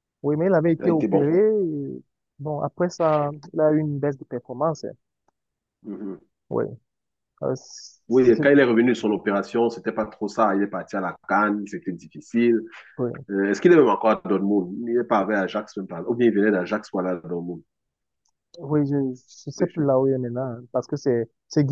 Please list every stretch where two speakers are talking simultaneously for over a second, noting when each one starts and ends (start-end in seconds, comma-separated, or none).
none